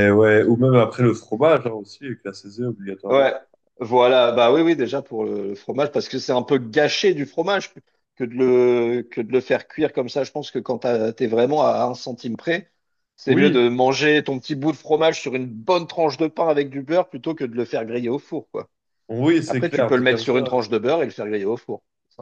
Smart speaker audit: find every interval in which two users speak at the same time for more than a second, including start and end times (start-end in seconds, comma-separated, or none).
19.4-21.0